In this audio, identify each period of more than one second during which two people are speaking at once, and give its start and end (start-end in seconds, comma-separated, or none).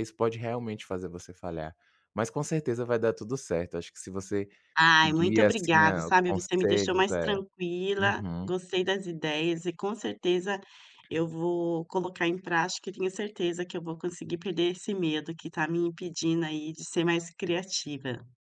5.0-7.2